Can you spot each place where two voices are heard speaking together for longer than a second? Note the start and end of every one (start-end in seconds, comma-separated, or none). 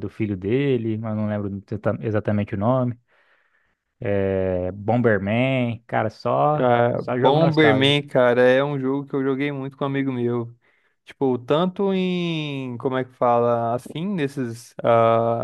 6.5-8.0